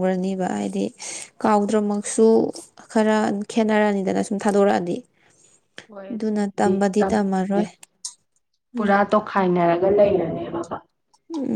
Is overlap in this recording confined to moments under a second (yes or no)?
no